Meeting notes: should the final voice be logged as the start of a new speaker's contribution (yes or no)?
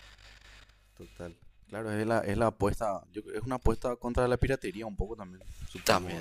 yes